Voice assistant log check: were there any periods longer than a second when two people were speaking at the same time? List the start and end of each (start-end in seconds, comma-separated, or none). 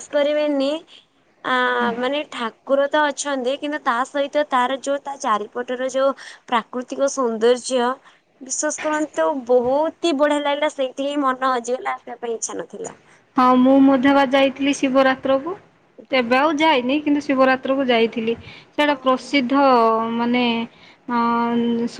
none